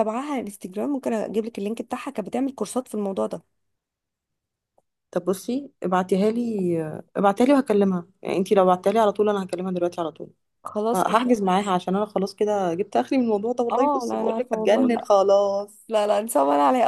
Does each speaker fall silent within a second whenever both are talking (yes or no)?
no